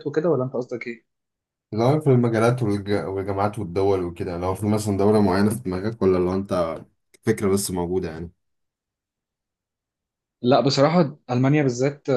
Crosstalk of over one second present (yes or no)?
no